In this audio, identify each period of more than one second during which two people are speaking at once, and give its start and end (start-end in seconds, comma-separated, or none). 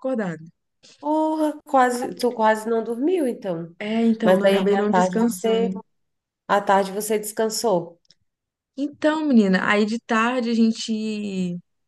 4.2-5.8